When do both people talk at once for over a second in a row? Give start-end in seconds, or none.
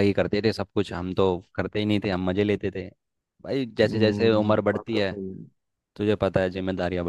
3.8-5.2